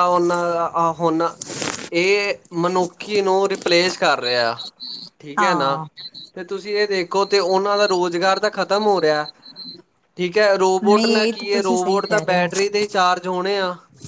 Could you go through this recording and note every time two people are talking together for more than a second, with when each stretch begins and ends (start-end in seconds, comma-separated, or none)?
10.8-12.5